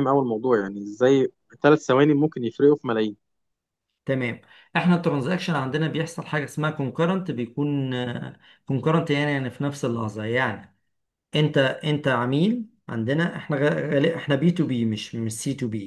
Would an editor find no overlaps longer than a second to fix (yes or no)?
yes